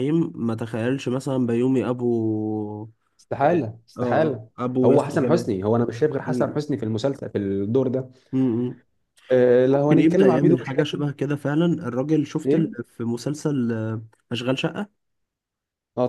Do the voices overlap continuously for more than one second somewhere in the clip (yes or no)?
yes